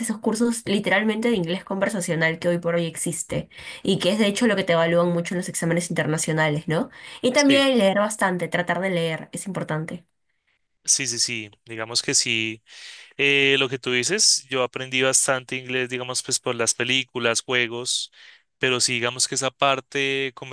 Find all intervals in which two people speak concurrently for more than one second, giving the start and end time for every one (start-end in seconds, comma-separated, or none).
none